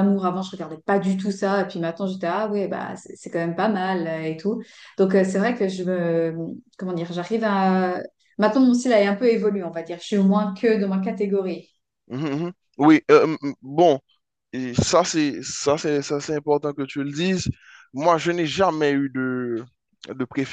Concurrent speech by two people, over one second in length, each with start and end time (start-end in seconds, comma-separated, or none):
none